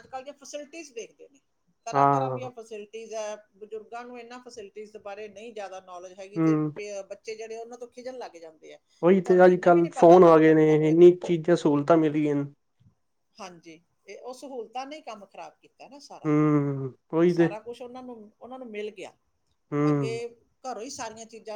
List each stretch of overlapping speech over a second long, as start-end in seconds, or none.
9.2-11.1